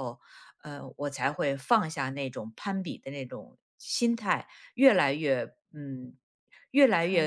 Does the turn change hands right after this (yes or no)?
no